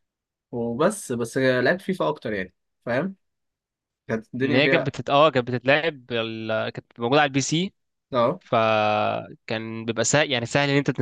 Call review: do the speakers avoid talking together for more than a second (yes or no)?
yes